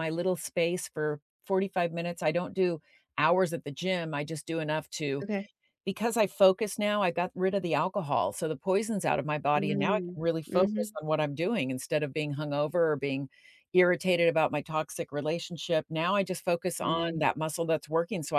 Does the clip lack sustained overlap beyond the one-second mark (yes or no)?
no